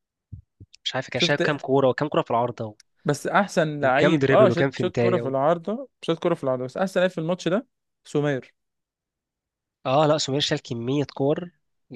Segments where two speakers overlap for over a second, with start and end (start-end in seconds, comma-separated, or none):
3.8-5.3